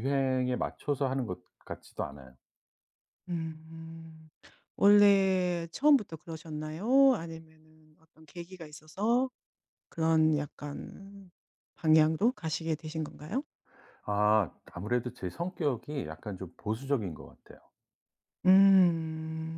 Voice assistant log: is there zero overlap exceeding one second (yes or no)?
yes